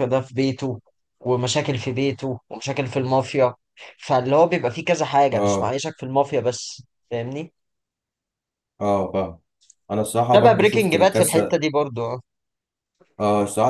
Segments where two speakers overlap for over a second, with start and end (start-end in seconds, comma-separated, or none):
10.3-11.6